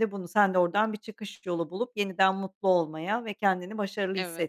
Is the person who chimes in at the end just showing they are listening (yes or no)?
yes